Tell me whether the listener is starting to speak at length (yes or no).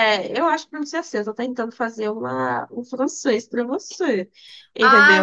yes